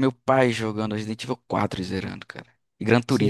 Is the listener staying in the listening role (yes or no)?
no